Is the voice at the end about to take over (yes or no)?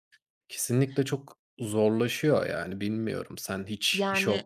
no